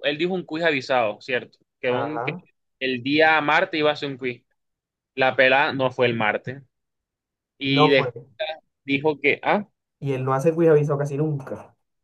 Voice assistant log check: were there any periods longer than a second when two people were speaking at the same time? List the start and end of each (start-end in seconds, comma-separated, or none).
none